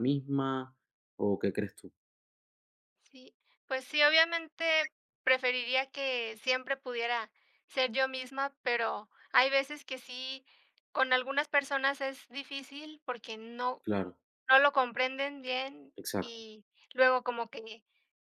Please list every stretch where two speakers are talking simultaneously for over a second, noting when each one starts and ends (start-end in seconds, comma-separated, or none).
none